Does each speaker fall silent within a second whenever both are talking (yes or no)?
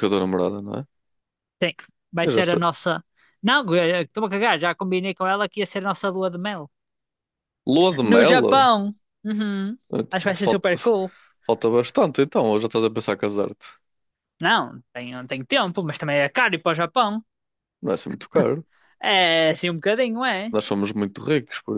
yes